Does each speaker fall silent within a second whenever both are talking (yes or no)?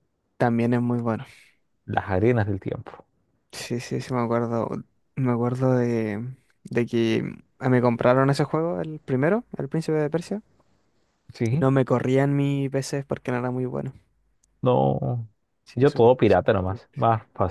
no